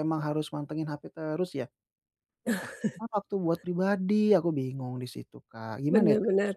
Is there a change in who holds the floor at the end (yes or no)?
yes